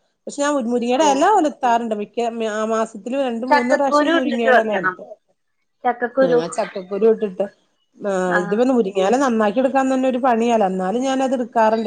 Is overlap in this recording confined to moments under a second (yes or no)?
no